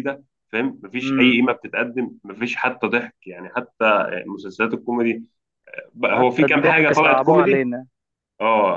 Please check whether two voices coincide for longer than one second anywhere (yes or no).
yes